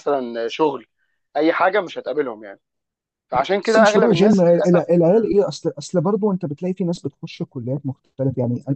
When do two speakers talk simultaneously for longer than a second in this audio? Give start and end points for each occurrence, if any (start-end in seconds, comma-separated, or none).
3.6-5.3